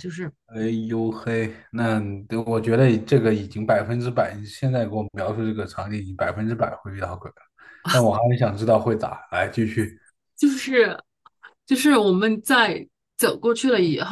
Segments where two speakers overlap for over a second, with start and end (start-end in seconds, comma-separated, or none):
none